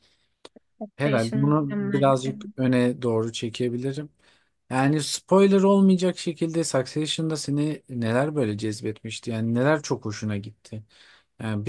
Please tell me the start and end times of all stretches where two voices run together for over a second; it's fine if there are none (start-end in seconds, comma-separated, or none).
1.0-2.4